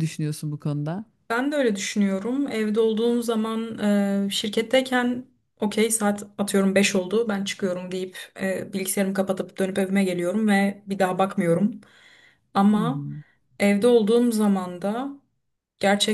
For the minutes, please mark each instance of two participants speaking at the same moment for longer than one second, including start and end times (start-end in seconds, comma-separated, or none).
none